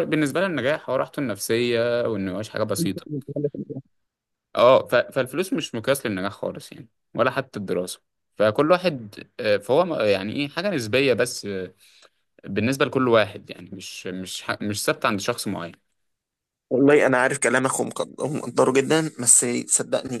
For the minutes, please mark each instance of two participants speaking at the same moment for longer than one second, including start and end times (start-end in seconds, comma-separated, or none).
none